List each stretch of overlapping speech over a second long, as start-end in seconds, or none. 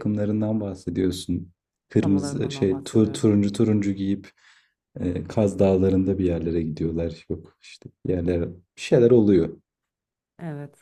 2.0-3.2